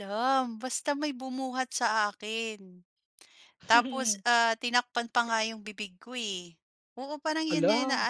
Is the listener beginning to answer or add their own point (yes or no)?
no